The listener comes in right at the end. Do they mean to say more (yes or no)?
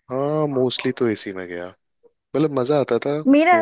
yes